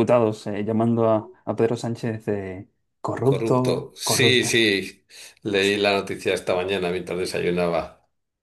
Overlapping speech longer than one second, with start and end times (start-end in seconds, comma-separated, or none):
3.2-4.7